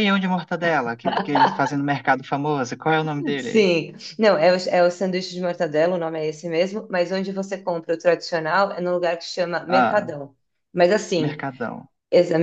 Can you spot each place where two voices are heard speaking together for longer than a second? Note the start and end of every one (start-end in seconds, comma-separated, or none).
none